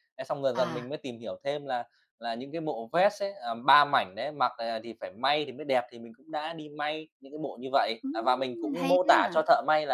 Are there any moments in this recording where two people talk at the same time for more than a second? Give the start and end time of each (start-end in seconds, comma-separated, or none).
8.0-9.4